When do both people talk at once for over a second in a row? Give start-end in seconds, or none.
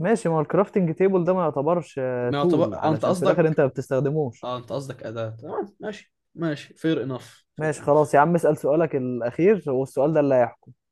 2.2-3.6